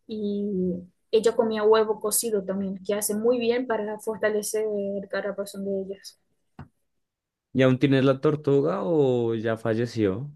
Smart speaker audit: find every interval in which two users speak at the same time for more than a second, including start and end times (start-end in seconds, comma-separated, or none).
none